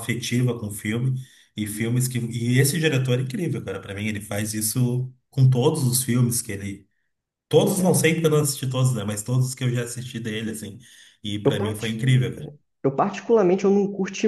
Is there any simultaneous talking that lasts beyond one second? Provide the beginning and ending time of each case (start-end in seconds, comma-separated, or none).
none